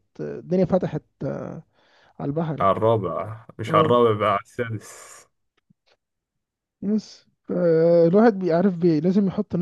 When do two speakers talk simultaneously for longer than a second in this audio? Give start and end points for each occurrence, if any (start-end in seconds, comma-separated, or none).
none